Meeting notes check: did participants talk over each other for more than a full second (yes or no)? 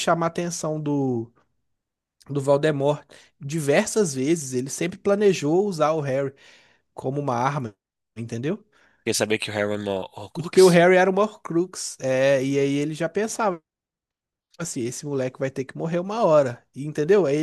no